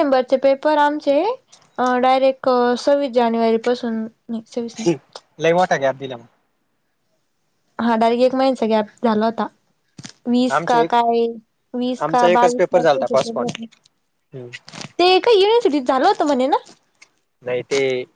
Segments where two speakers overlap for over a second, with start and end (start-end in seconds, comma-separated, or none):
12.0-13.5